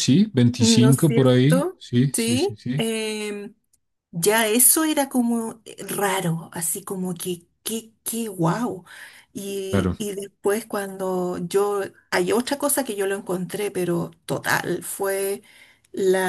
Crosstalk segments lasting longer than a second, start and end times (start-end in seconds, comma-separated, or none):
0.6-2.9